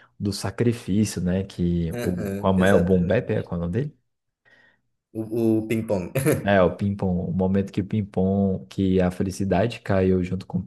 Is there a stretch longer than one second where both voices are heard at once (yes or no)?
yes